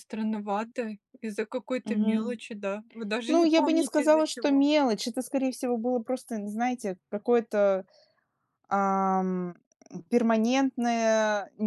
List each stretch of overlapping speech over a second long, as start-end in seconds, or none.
3.3-4.7